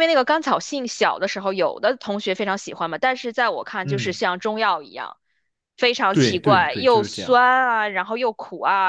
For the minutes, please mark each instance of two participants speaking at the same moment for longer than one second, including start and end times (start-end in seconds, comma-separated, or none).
6.1-7.4